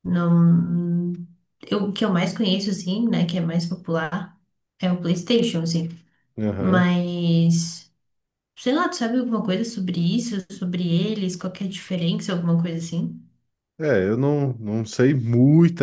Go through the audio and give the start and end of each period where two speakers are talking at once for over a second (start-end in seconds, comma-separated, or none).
none